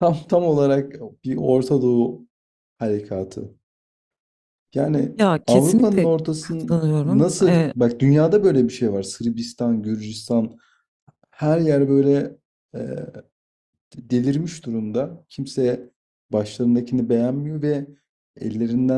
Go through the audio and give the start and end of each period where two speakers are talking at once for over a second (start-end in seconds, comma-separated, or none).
5.2-7.7